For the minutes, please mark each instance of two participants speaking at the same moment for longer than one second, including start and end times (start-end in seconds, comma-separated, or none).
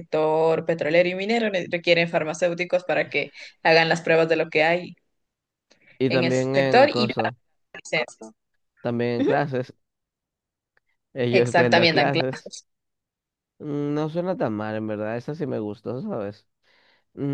6.1-7.3, 11.3-12.5